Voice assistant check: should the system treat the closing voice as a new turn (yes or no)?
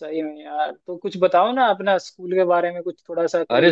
yes